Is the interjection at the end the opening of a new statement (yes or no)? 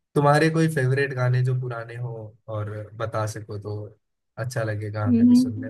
yes